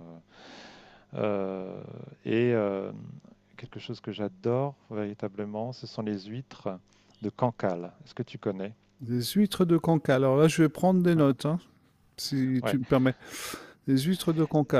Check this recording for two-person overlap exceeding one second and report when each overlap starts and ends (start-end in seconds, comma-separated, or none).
none